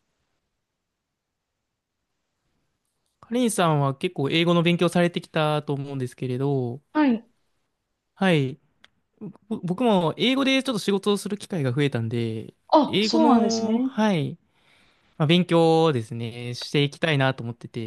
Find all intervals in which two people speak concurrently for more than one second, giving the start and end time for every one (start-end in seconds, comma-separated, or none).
12.7-13.9